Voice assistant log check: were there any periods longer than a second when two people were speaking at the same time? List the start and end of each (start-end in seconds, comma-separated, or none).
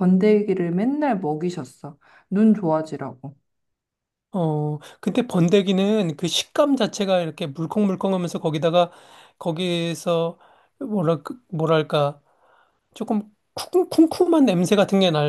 none